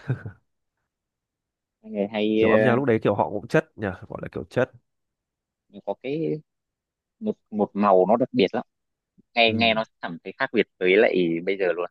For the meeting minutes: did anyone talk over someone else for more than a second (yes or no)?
no